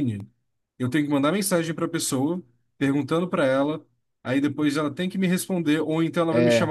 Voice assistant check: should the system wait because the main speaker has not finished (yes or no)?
yes